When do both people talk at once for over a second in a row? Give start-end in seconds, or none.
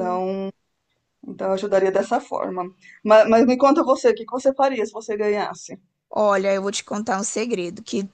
none